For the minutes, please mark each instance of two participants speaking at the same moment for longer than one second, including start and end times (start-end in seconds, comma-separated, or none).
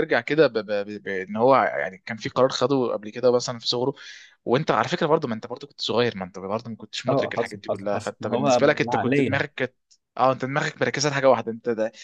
7.1-9.4